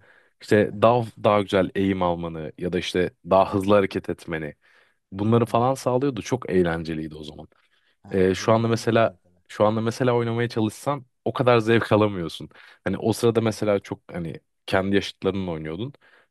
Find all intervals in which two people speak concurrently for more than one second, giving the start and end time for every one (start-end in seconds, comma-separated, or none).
8.1-9.4